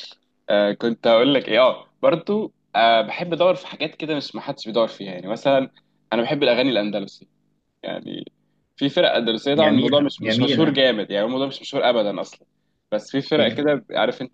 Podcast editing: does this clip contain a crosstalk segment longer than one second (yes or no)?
yes